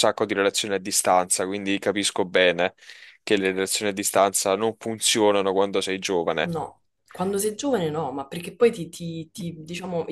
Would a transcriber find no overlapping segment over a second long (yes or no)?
yes